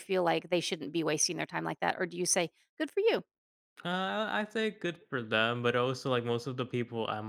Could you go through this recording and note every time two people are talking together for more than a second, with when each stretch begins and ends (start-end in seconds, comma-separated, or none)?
none